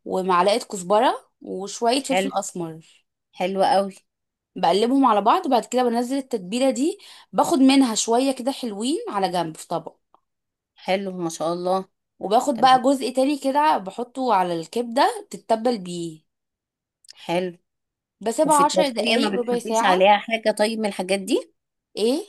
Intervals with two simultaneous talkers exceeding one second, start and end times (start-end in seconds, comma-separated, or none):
18.4-20.1